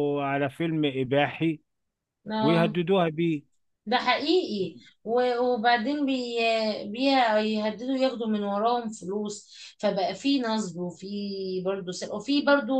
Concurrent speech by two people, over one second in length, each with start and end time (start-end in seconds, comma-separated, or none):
none